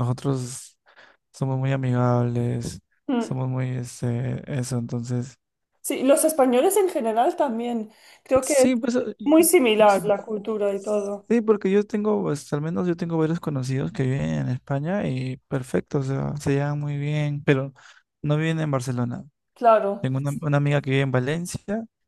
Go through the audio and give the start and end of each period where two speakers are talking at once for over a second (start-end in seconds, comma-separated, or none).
none